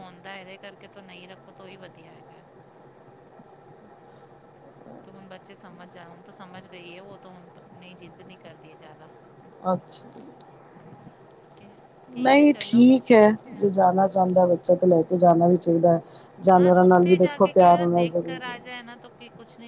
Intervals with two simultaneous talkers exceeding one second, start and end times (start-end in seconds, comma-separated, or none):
16.6-18.8